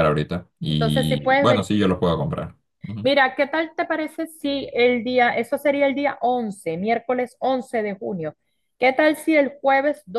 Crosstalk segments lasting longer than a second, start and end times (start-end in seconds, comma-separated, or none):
0.7-2.1